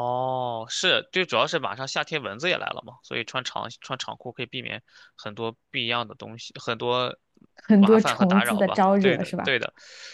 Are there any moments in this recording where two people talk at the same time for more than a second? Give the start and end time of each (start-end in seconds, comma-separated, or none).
7.8-9.6